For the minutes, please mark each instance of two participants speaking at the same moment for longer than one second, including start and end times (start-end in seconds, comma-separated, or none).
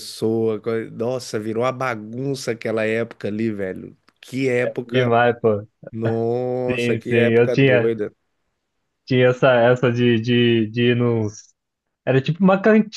6.7-7.9